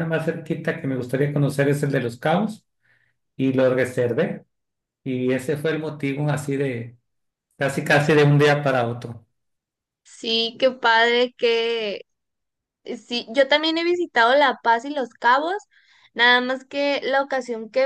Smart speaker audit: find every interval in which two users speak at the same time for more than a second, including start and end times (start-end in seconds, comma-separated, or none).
none